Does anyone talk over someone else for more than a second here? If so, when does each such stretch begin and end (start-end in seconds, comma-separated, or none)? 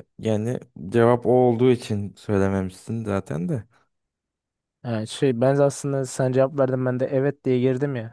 none